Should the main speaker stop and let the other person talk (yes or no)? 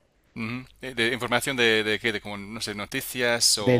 yes